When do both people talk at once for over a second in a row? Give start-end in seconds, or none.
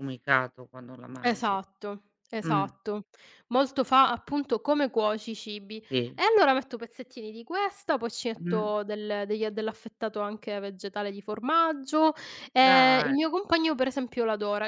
none